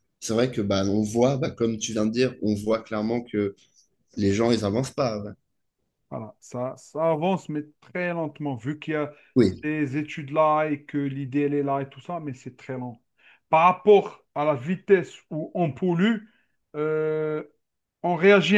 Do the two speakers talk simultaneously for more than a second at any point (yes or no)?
no